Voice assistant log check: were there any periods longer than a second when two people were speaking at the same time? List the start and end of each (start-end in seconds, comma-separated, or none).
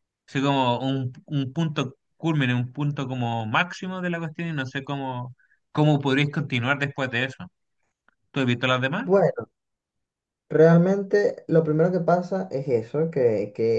none